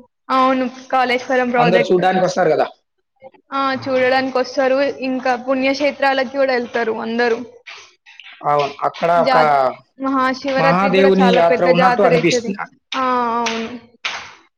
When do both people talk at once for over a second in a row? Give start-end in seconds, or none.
10.6-12.5